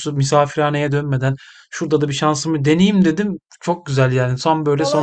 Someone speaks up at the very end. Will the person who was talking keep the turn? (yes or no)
no